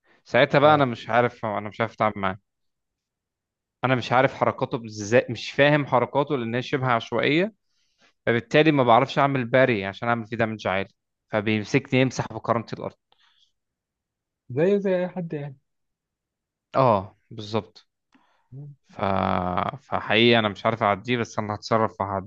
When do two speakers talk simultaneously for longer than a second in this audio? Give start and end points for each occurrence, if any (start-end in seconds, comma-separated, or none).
none